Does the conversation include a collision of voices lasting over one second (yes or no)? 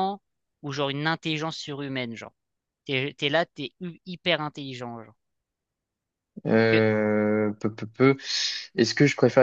no